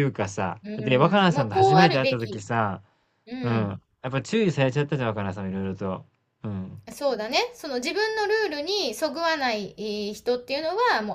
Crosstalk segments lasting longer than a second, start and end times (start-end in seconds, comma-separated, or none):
0.6-2.4